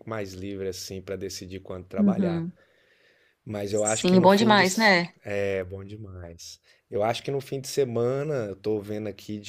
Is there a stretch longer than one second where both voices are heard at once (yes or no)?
yes